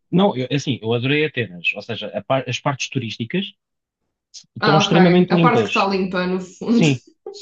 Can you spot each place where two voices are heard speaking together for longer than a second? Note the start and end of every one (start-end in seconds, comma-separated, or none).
4.6-5.9